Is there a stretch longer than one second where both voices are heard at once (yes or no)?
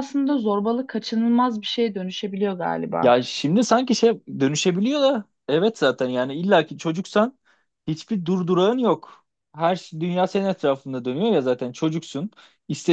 no